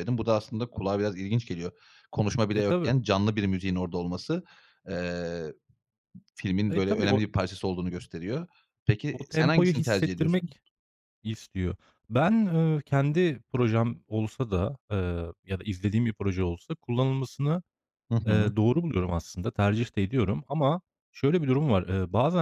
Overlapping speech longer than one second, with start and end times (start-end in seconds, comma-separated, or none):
9.1-10.6